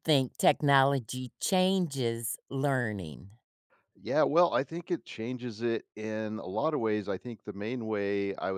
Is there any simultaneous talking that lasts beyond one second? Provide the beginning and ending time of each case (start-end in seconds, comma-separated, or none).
none